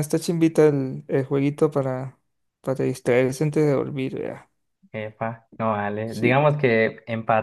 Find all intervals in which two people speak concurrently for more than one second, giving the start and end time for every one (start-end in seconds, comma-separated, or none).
none